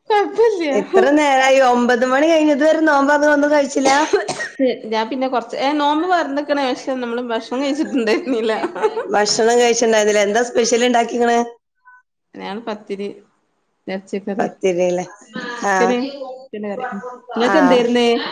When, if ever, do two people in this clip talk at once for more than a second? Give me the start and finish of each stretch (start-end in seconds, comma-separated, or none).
none